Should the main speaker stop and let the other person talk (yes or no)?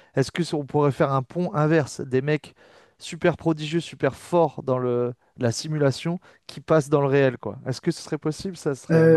yes